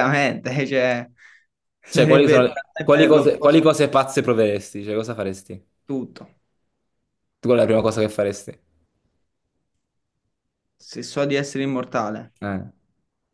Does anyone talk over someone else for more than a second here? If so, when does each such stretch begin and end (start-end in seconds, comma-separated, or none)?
1.9-3.6